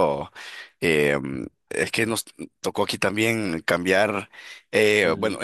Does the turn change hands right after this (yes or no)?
no